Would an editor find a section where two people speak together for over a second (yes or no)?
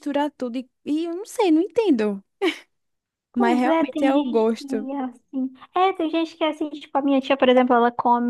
yes